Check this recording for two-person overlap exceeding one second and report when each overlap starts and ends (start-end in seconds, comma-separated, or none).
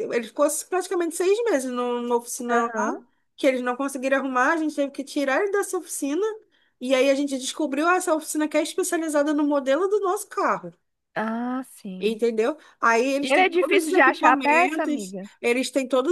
13.2-15.3